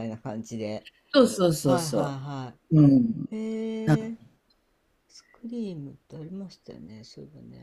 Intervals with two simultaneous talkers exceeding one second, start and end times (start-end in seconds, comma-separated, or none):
none